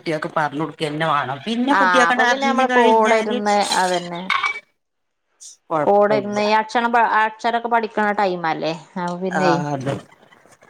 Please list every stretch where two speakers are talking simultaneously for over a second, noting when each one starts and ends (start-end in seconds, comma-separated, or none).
1.8-3.4